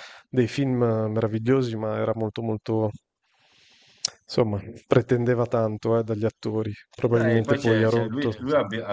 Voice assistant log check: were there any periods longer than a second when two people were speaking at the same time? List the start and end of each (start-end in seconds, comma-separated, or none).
7.1-8.3